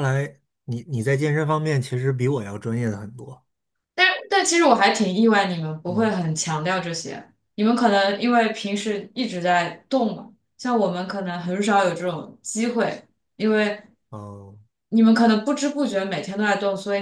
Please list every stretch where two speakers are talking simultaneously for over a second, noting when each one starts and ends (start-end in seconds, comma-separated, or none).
none